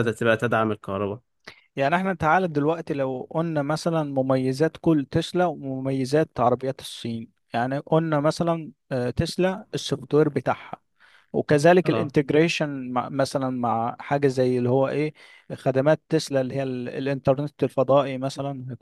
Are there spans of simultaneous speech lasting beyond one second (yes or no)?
no